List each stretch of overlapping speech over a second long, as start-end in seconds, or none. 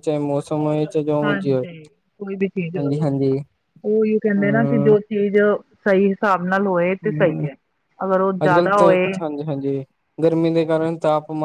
none